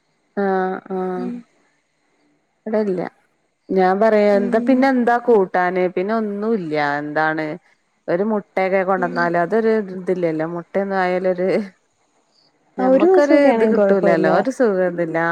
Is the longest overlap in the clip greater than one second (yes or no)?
yes